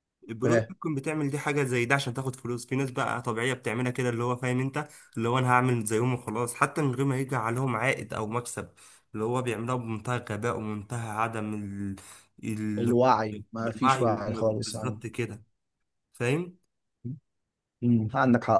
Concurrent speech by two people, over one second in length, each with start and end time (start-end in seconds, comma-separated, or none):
13.8-15.0